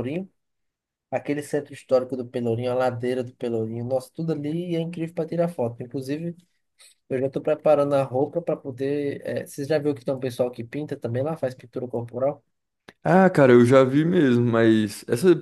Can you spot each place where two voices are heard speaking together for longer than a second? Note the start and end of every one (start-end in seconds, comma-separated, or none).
none